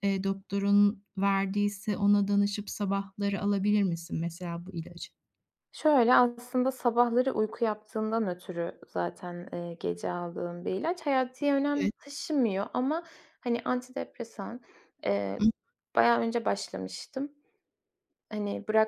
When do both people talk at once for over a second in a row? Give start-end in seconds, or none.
none